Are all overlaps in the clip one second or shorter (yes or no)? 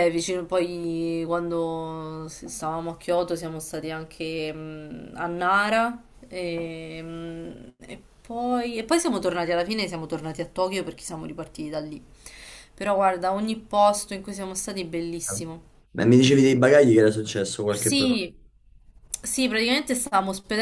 yes